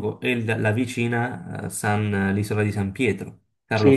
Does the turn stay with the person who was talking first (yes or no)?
no